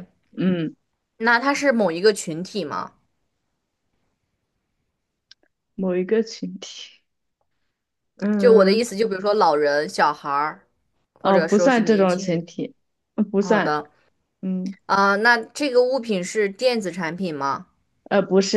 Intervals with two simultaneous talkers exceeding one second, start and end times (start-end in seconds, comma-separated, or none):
11.2-12.4